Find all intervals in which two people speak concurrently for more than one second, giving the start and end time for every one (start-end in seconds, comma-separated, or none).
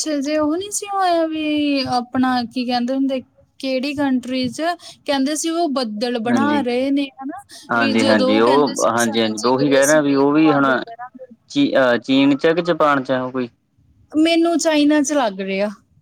7.8-10.7